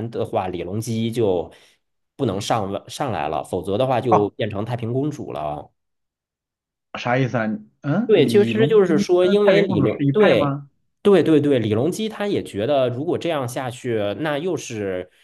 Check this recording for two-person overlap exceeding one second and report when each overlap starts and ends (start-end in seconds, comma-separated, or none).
8.1-10.6